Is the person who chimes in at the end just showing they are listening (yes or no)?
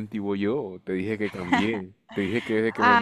no